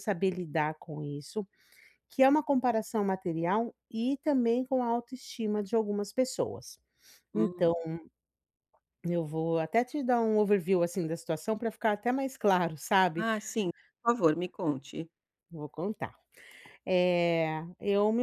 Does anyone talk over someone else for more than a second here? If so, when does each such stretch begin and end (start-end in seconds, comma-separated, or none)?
none